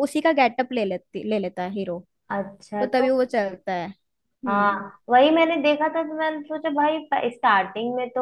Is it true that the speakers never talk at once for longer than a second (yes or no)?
yes